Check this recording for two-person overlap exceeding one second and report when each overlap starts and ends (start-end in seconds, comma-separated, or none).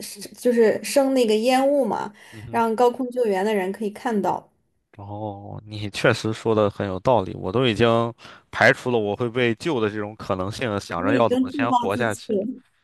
11.0-12.3